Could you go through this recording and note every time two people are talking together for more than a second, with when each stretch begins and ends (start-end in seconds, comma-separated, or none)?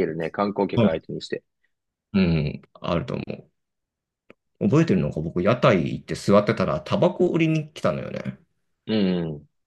none